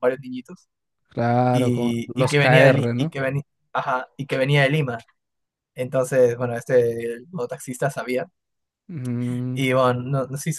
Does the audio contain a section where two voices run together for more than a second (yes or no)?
yes